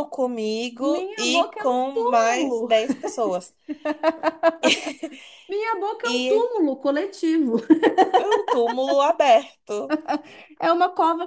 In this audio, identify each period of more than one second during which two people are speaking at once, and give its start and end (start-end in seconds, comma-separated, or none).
0.8-2.7